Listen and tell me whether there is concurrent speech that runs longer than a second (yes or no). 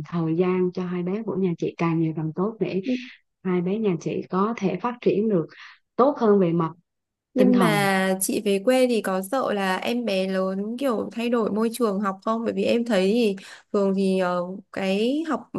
no